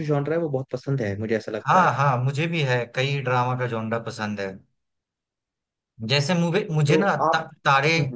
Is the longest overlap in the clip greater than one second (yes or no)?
no